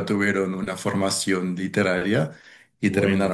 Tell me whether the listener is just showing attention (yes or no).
yes